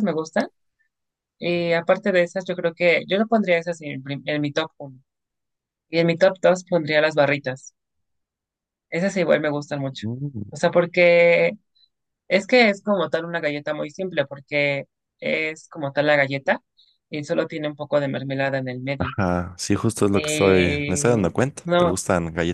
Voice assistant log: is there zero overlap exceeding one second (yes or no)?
no